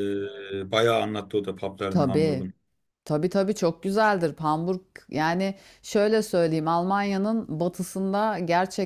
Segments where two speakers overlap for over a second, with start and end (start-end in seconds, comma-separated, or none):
none